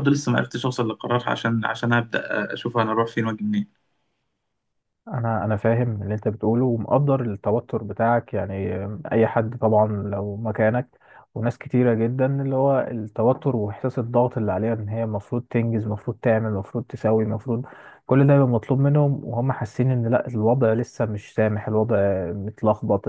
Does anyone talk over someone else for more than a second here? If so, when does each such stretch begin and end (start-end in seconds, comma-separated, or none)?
none